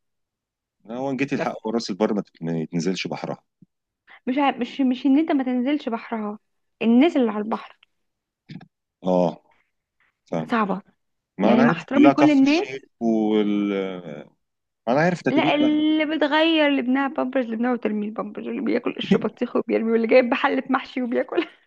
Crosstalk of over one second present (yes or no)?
yes